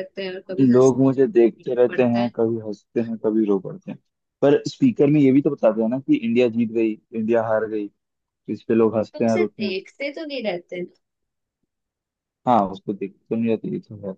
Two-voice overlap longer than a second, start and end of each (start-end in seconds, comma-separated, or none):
0.6-2.3